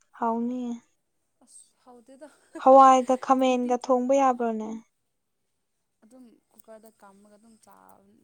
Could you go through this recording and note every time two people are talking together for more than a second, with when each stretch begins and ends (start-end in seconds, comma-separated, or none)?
none